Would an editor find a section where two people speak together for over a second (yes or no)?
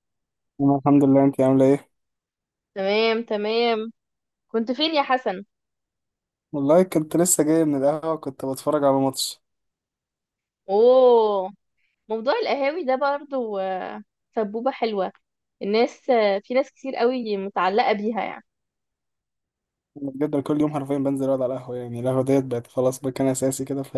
no